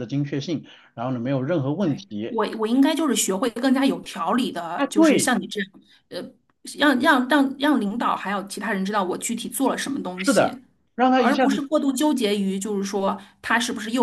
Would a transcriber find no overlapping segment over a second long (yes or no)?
yes